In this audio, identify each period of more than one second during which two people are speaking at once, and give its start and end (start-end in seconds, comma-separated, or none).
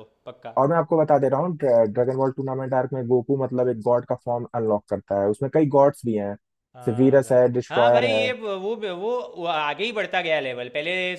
6.8-8.3